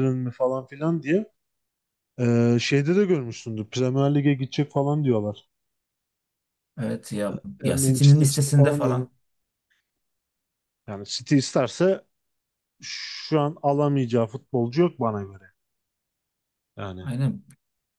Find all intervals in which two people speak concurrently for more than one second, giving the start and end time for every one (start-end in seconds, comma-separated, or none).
7.6-9.1